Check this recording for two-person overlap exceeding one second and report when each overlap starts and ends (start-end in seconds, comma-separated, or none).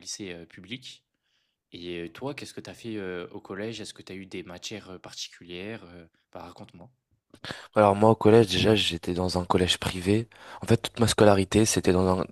none